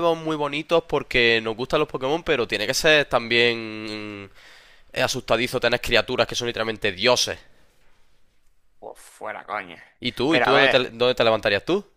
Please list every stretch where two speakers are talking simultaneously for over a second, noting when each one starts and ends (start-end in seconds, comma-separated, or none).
none